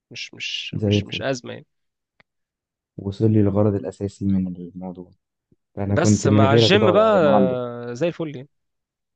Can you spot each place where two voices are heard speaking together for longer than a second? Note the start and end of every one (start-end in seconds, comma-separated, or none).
5.9-7.2